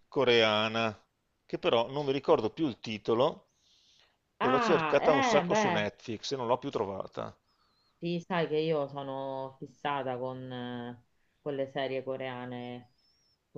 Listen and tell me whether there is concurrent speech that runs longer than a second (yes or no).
yes